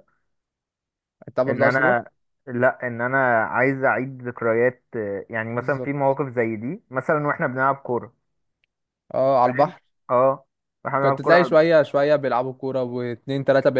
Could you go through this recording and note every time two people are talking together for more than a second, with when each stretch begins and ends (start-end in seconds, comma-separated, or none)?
none